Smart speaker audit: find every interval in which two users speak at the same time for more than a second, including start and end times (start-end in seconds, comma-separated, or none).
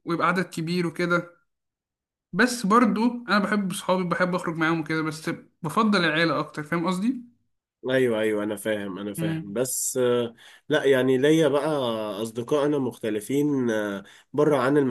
none